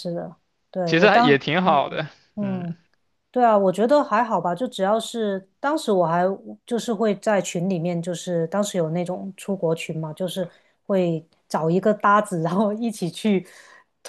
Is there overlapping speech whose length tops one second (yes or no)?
yes